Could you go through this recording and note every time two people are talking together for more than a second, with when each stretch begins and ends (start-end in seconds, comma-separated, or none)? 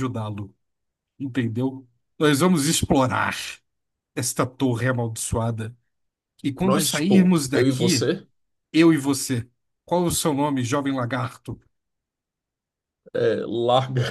6.6-8.1